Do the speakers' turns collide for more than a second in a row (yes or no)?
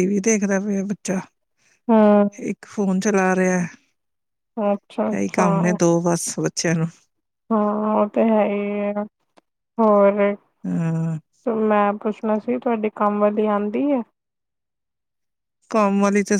no